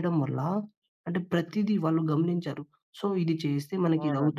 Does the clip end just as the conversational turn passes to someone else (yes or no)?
no